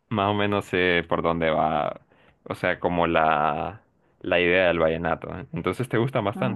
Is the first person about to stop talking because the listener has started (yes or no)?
yes